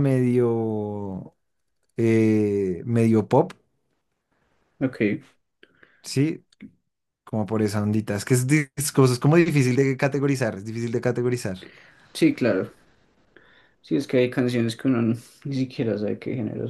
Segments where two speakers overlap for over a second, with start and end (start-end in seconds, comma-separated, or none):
none